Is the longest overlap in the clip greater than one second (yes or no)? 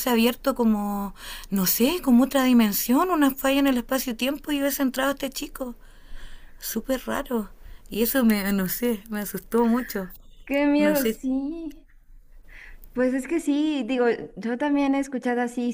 no